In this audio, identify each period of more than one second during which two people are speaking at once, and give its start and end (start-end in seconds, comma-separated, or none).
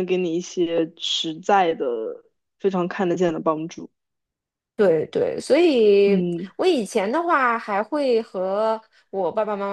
none